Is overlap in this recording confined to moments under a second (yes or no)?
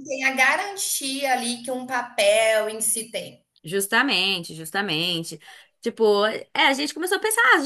yes